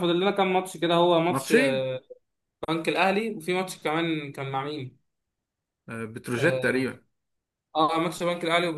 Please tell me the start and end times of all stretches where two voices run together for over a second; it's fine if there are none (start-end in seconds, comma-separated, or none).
none